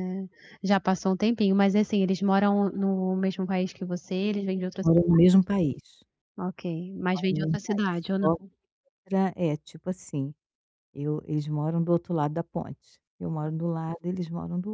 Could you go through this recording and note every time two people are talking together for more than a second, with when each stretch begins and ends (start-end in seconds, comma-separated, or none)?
7.1-8.4